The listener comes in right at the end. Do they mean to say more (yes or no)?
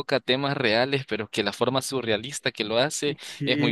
yes